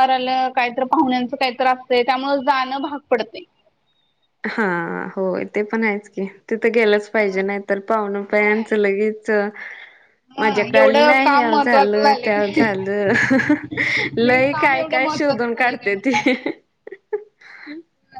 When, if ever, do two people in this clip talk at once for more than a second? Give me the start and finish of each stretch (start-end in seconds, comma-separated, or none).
10.4-12.7, 14.2-16.1